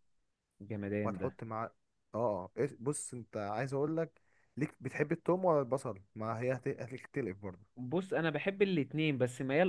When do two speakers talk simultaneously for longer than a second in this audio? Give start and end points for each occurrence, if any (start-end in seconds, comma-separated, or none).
none